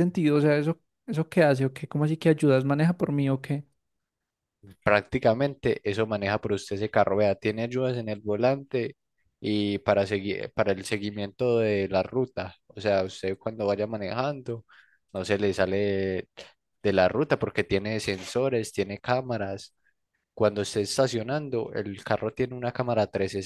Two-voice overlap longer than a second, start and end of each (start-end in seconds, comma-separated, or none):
none